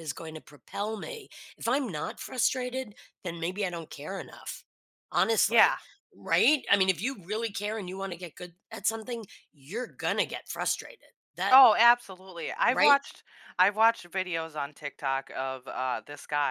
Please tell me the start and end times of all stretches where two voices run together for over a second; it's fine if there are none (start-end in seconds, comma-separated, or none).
none